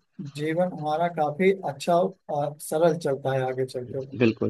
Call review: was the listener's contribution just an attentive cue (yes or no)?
no